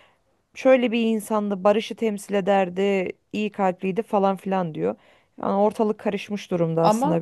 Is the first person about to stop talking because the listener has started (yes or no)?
yes